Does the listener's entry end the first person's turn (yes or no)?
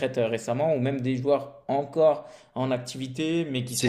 no